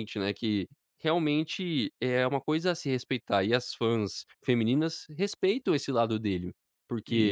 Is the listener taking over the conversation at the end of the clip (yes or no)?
no